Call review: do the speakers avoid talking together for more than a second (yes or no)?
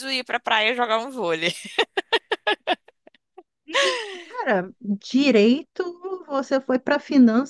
yes